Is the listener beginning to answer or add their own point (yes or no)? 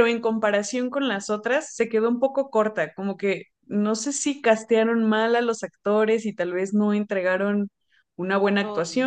no